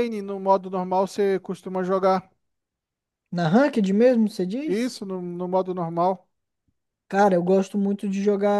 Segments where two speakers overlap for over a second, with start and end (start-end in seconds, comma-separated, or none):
none